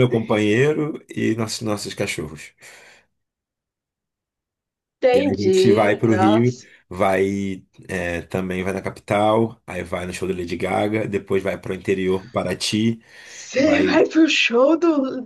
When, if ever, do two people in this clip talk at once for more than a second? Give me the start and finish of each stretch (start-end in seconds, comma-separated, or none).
5.1-6.6